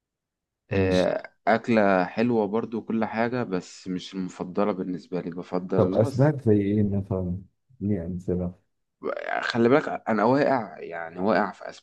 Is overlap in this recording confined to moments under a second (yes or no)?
yes